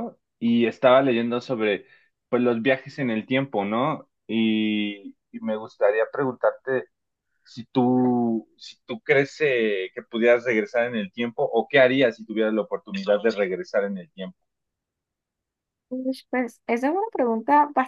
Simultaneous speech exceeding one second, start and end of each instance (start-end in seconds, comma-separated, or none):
none